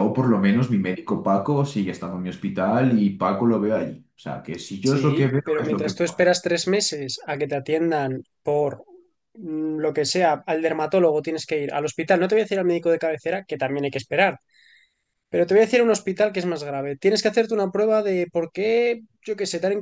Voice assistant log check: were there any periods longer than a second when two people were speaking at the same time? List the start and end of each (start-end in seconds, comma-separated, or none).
4.8-6.3